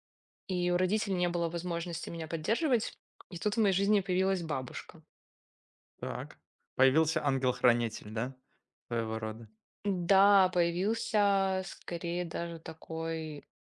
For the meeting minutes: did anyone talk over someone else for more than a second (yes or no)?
no